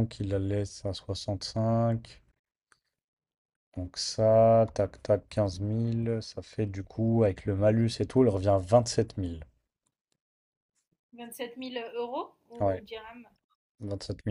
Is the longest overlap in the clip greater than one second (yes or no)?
no